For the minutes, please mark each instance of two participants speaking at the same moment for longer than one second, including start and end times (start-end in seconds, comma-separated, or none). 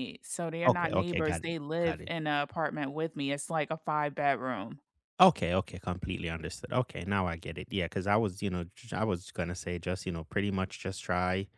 0.7-2.1